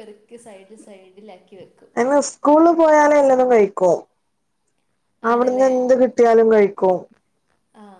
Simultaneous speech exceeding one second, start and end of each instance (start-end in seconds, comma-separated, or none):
none